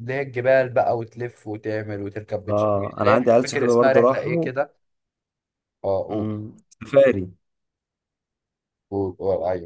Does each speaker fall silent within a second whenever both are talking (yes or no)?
no